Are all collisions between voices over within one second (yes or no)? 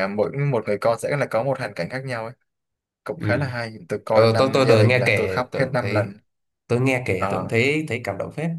no